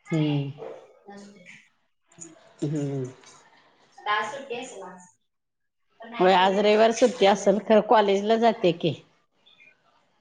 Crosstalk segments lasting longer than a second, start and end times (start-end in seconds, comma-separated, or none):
6.2-7.6